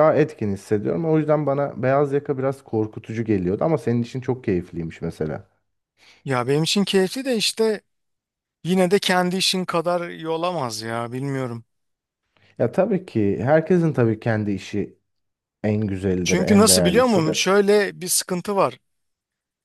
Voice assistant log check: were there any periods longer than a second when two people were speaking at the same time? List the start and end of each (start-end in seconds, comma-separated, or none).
16.2-17.5